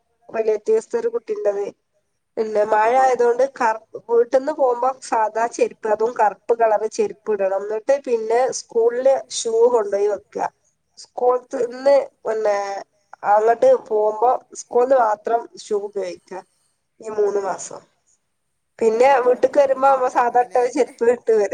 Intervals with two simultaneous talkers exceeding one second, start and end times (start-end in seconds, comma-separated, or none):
18.8-20.6